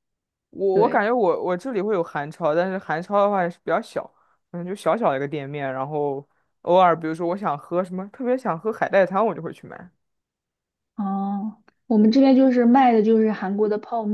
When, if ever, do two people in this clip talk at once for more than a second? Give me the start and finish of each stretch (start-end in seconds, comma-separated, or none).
none